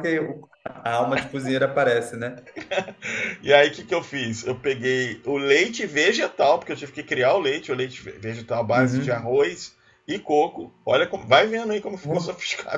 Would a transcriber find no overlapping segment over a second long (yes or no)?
yes